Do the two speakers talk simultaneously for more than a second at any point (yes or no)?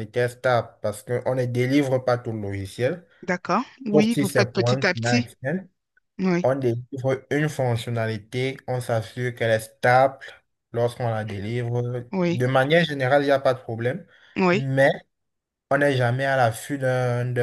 yes